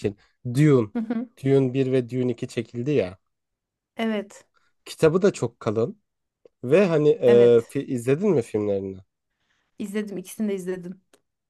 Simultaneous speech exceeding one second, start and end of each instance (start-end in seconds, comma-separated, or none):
none